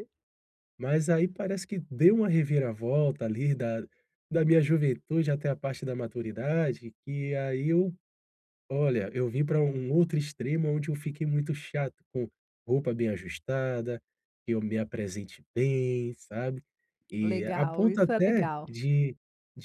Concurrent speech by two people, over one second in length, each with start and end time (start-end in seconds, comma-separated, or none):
17.2-18.6